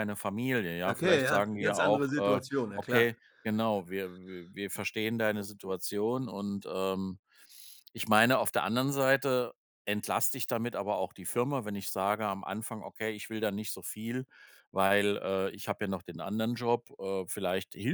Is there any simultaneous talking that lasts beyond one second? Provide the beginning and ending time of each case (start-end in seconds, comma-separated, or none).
0.8-3.1